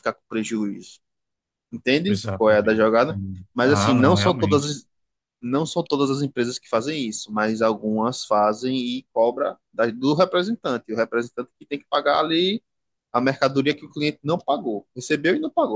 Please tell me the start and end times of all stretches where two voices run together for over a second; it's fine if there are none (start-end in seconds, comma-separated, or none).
2.0-4.7